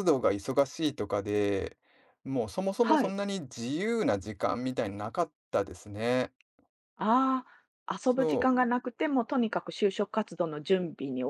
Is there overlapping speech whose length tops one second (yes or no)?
no